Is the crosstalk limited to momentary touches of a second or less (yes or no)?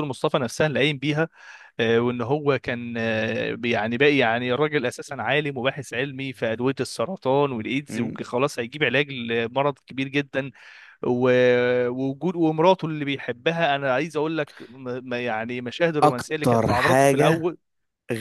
no